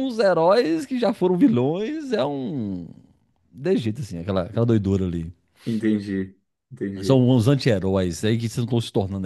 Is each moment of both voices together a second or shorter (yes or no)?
yes